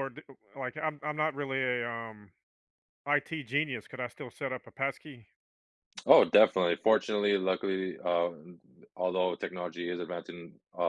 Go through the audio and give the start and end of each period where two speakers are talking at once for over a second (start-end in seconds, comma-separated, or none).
none